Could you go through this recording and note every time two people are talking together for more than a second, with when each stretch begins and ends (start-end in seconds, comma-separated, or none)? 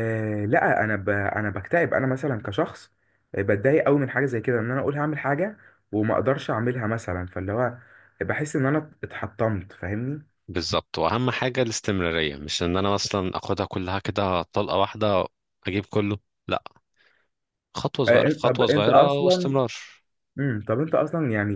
18.1-19.5